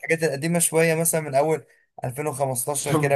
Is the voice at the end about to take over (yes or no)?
yes